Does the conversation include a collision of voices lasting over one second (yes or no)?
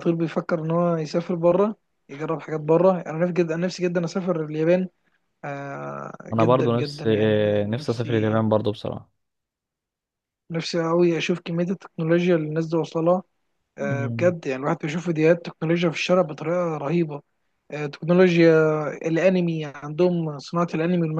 yes